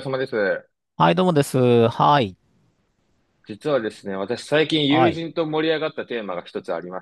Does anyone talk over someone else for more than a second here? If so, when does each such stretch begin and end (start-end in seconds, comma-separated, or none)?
none